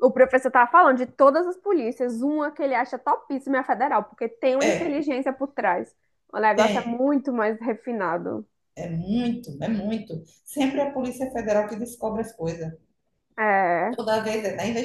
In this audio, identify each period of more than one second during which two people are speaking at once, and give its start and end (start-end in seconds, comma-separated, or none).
none